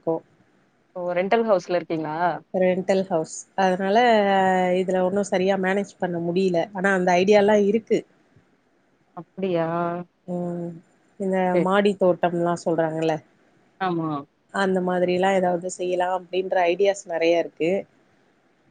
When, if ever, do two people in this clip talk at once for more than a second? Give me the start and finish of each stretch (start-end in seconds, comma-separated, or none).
none